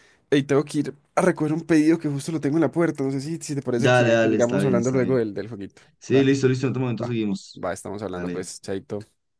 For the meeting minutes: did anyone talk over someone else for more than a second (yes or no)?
yes